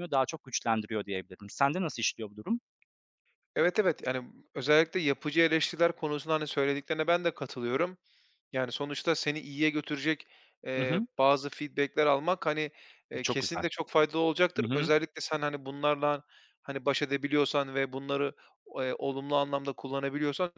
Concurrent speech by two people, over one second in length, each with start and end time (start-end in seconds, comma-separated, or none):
none